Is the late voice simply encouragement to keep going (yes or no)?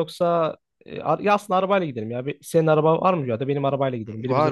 no